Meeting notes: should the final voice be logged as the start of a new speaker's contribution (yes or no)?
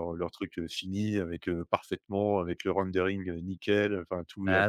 no